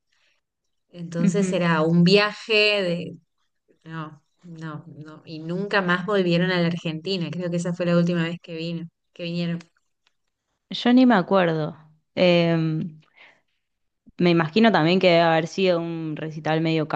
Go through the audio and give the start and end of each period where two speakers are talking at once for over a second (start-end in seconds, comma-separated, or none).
none